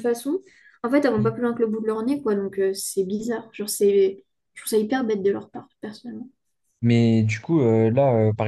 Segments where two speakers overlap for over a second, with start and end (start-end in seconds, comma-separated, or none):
none